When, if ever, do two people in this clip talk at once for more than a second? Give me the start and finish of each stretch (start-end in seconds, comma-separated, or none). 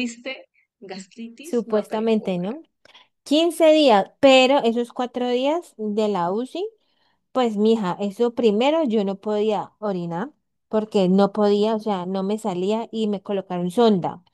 1.4-2.6